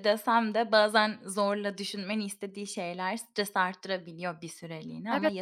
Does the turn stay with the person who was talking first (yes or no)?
no